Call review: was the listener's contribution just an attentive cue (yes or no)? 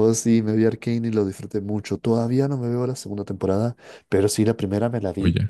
yes